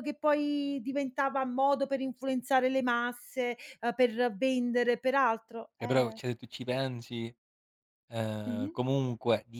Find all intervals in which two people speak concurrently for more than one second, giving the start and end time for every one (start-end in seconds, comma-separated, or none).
none